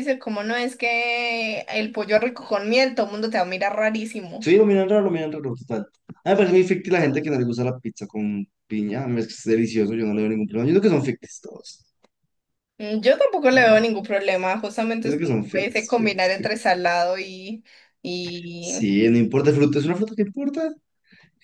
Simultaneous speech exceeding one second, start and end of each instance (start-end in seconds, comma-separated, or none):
15.0-16.7